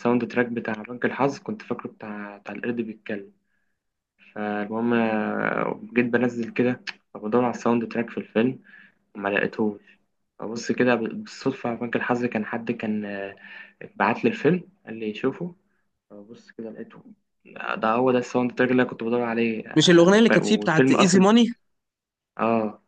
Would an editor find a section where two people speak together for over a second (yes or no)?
yes